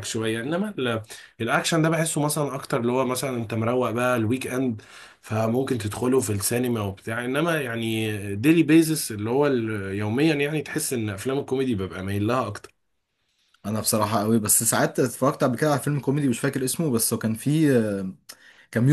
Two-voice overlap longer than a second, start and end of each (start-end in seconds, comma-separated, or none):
none